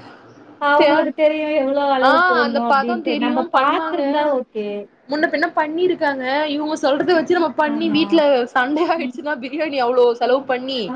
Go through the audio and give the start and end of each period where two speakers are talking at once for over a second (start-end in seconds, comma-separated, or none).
2.1-4.2